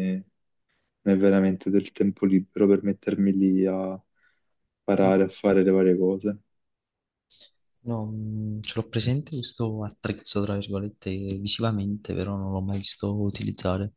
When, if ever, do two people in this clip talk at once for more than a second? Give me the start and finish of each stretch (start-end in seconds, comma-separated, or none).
none